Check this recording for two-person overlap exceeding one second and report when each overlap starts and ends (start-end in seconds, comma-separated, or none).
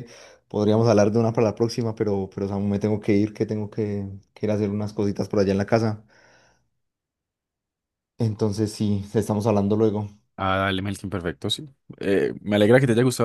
none